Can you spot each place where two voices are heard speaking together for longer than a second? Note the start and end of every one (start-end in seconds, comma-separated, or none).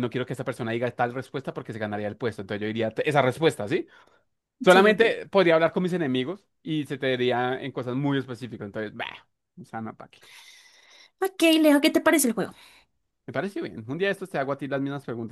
none